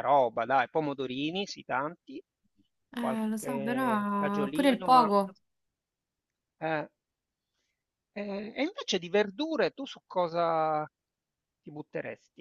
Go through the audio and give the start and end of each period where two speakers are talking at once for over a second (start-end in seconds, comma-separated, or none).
3.0-5.1